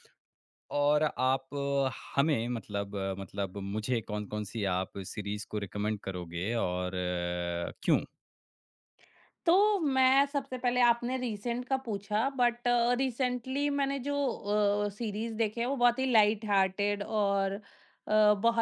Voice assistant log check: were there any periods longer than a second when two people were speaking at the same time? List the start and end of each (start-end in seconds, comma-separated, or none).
none